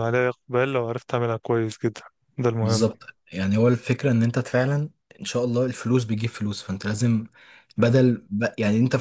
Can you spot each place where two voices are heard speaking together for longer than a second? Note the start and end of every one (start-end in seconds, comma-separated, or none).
none